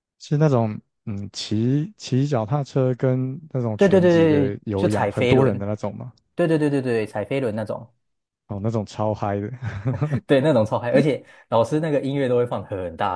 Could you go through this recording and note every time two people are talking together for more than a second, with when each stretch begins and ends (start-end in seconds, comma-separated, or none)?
3.8-5.5